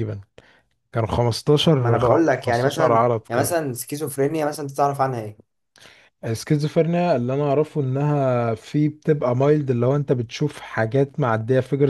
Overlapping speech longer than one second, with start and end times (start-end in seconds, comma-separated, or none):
1.8-3.6